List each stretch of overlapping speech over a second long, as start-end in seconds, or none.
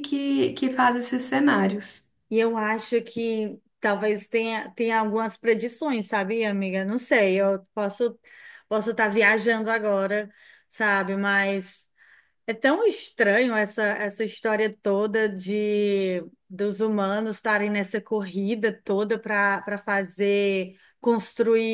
none